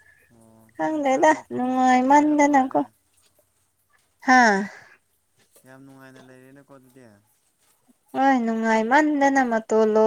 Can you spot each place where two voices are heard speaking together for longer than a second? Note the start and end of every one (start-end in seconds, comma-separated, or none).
0.7-2.8